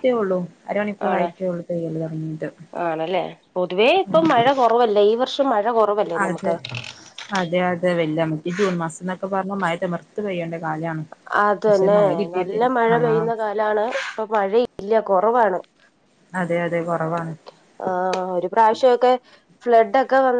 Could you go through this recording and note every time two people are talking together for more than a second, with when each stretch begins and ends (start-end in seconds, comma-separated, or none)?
none